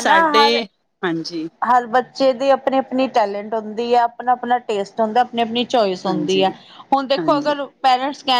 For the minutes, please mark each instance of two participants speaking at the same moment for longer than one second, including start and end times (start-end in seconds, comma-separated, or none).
none